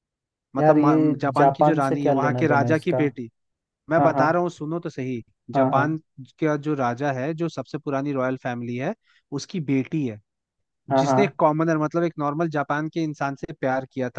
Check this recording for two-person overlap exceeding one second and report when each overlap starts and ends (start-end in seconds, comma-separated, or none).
0.6-3.0